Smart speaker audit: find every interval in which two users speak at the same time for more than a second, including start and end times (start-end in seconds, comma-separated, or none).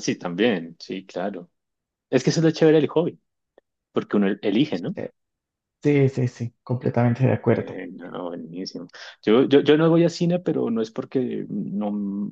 none